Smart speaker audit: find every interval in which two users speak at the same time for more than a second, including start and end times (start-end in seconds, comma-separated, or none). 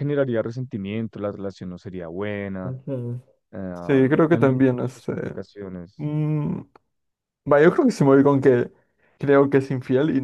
3.7-5.3